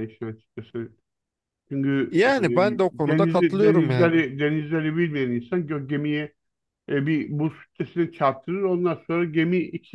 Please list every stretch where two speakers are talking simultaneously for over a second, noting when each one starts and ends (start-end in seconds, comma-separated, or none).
2.1-4.2